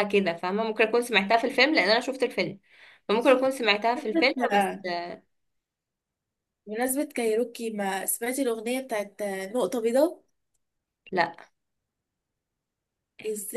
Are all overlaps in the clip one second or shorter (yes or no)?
yes